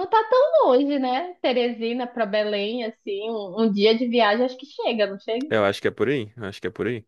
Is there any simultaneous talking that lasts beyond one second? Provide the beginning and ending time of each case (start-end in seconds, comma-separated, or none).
none